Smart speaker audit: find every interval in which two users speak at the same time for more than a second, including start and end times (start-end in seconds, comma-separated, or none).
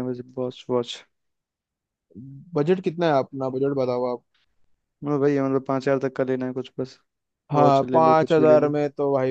7.5-8.7